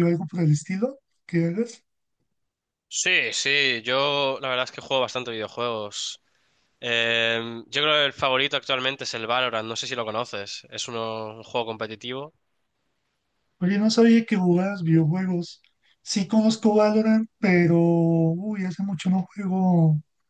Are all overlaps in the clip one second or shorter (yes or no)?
yes